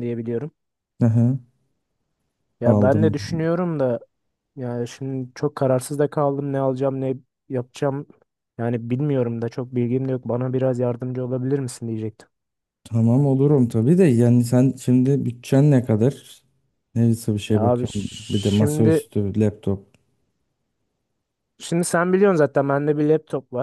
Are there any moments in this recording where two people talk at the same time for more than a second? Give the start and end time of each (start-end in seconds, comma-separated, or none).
17.5-19.1